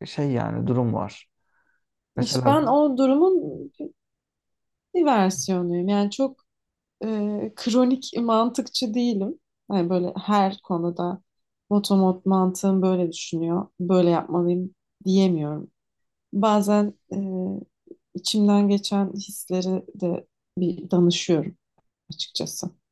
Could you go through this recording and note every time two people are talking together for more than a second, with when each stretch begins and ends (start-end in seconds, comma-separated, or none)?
none